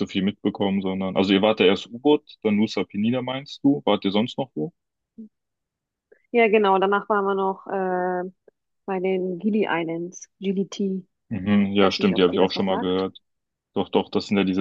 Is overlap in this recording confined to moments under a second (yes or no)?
no